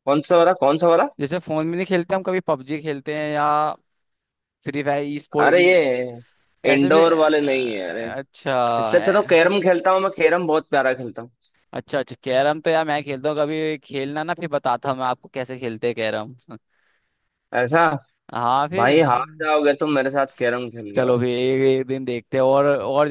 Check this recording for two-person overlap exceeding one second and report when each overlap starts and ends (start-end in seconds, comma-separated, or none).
6.7-8.1